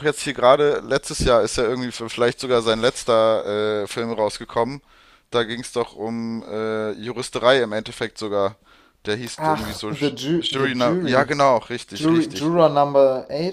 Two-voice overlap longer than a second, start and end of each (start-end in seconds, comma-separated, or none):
9.4-11.3